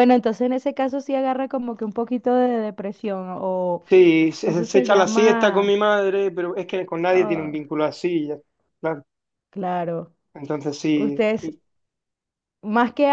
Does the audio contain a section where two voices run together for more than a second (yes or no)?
yes